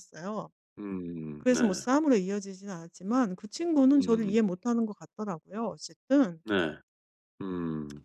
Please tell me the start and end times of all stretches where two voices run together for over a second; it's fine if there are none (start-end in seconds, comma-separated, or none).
none